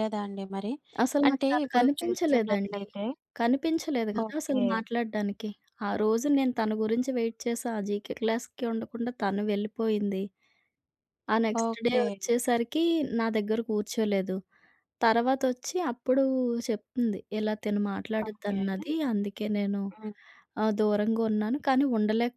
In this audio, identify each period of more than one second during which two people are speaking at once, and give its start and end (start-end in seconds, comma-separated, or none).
1.3-2.8